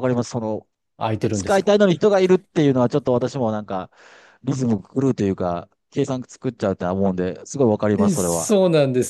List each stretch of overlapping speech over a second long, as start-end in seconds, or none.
none